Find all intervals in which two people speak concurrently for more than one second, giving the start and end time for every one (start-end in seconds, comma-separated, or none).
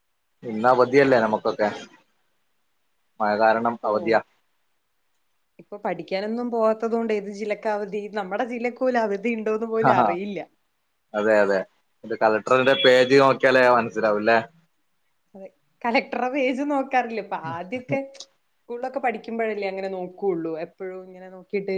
none